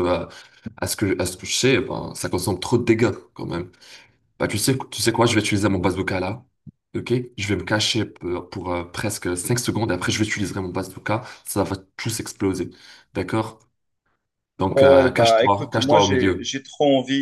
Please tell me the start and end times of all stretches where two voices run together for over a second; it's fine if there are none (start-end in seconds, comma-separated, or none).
14.7-16.5